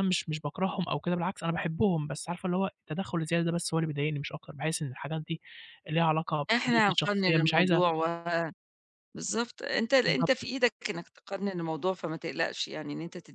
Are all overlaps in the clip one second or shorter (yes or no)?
no